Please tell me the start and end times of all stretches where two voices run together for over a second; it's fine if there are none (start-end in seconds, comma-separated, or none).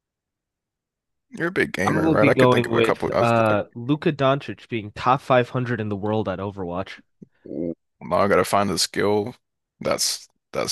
1.9-3.5